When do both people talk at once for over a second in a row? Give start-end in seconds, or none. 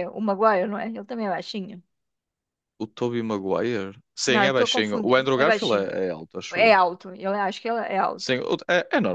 4.3-5.9